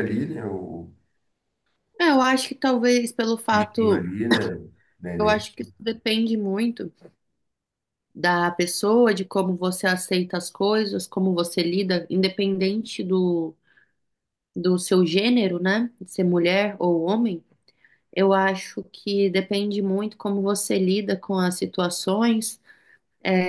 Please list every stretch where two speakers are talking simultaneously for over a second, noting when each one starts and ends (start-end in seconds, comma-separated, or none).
none